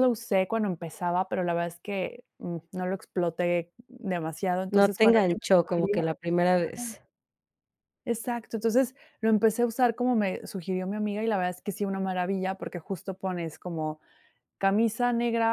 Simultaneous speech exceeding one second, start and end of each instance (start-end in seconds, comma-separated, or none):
4.7-6.0